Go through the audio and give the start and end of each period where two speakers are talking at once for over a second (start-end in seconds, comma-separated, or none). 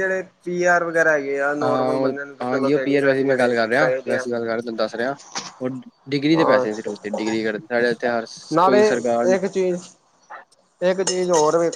1.6-4.2